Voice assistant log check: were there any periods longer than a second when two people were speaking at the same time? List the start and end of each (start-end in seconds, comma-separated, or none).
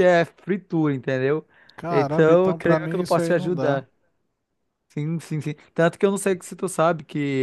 1.9-3.8